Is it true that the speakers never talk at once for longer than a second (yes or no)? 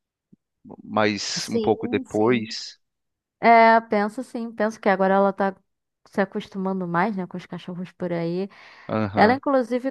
no